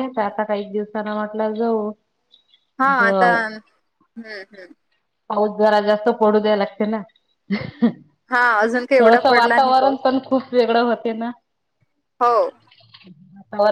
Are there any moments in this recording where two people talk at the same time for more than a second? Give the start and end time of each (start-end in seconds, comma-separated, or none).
8.3-10.0